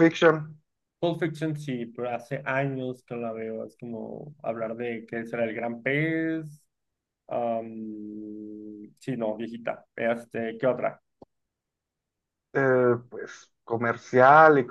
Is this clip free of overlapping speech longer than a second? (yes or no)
yes